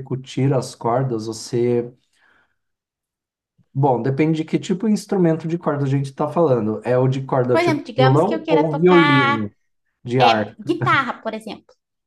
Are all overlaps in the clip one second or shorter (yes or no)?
no